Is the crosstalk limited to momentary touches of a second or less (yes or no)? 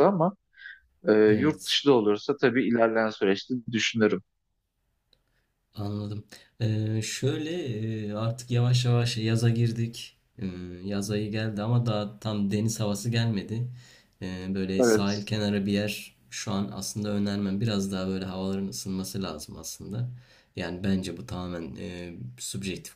yes